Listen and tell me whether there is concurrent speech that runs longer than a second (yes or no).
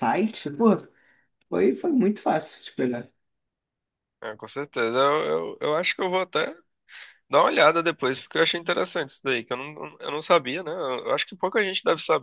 no